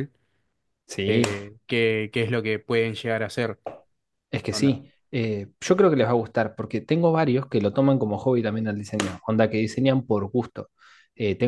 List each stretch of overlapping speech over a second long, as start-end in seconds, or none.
none